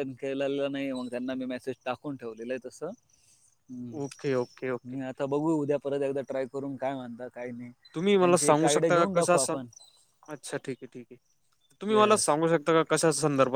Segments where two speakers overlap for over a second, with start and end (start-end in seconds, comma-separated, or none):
8.2-9.6